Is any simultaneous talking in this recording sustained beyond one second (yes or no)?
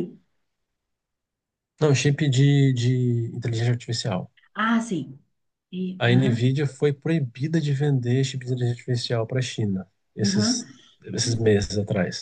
no